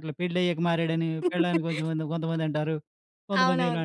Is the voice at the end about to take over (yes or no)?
yes